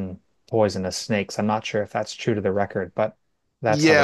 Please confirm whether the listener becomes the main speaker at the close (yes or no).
yes